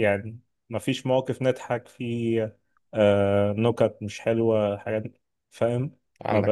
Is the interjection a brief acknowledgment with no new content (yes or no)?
yes